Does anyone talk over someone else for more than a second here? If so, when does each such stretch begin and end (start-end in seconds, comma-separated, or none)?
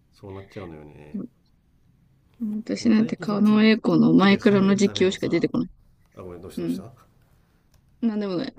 2.9-5.5